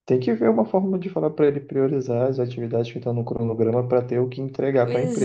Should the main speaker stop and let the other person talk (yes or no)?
yes